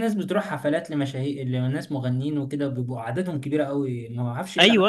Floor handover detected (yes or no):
yes